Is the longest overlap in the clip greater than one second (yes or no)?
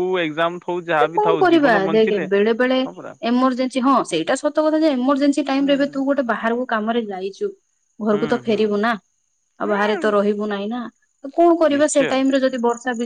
no